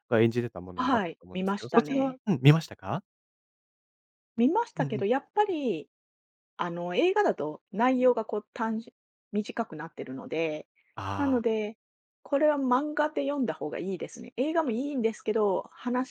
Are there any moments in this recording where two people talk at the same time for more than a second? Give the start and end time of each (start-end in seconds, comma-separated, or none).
0.8-2.2